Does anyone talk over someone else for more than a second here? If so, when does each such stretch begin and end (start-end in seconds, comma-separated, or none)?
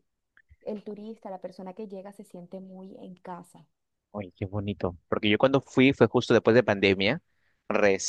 none